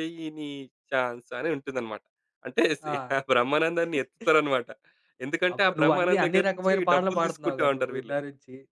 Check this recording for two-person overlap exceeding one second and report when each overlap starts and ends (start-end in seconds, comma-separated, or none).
5.5-8.1